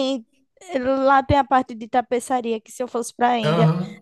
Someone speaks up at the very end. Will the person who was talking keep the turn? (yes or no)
yes